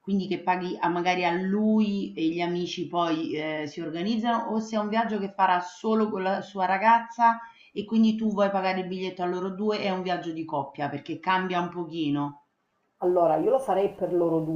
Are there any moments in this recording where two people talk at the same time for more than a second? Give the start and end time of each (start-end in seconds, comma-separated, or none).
none